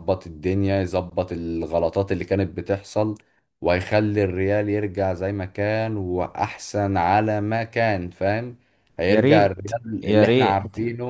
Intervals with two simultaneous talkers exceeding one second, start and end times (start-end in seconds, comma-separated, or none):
9.1-10.6